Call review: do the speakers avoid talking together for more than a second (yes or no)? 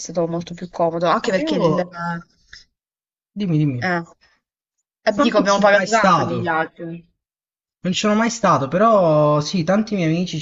no